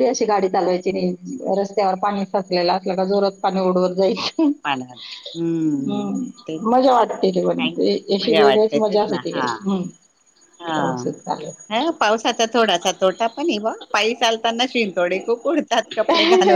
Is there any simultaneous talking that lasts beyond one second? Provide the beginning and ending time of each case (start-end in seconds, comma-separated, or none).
6.7-9.4